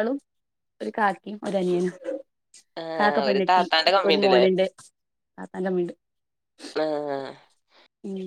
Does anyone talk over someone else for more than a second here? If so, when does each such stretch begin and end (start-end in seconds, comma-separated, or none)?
3.0-4.4